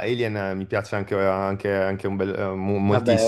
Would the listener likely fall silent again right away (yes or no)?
no